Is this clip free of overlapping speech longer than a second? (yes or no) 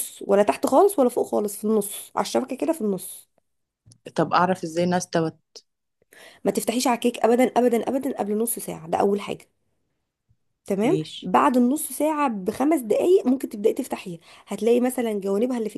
yes